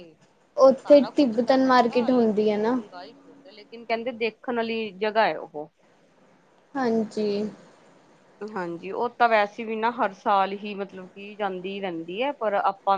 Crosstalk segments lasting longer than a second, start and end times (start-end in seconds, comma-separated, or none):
0.8-2.8